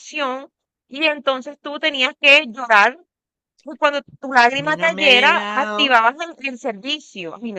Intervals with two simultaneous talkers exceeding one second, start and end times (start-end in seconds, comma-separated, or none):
4.5-6.0